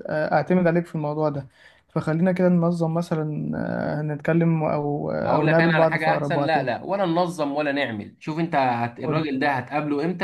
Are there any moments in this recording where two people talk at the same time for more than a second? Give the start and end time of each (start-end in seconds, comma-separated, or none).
5.2-6.7